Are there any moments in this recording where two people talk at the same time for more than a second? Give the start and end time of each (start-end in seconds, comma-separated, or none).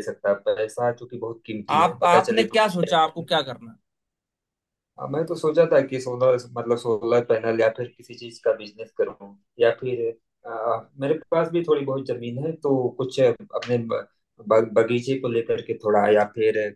1.7-3.3